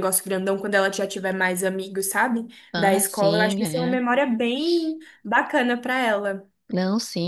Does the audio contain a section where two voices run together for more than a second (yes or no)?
yes